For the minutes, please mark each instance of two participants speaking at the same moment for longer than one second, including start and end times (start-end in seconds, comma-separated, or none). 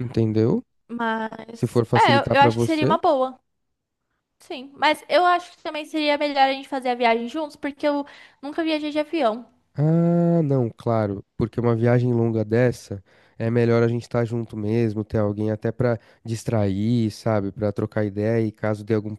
1.5-3.0